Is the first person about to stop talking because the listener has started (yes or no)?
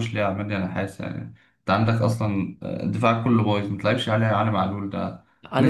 yes